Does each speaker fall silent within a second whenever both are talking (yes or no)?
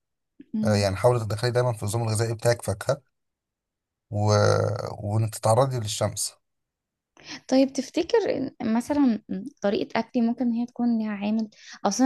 yes